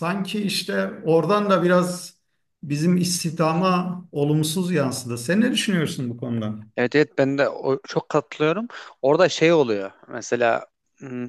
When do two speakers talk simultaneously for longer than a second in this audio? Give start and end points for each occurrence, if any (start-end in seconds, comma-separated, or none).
none